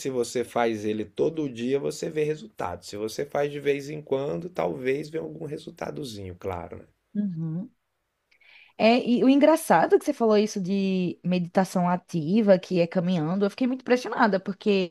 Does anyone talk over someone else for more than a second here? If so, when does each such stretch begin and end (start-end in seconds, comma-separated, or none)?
none